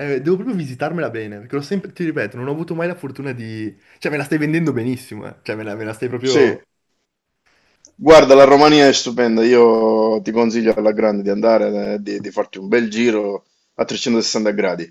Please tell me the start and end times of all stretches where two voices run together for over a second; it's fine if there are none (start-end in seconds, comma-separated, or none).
none